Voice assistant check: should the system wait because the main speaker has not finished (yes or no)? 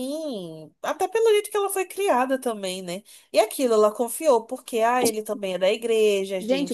no